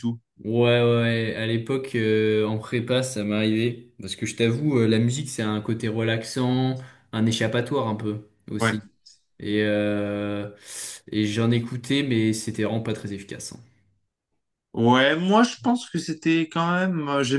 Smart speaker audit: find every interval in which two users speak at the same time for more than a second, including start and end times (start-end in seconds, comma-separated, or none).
none